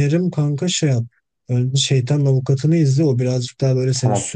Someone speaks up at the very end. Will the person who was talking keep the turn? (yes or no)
yes